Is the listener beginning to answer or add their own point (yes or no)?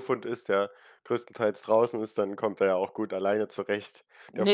yes